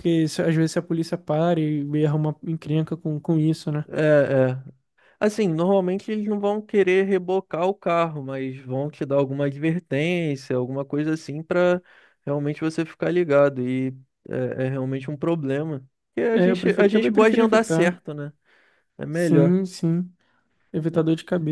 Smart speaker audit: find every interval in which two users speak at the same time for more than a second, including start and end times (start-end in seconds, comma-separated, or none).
16.3-18.0